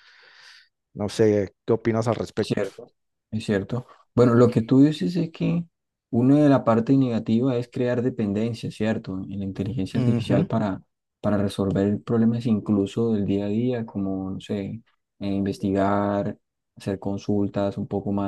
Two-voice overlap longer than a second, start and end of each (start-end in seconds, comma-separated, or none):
none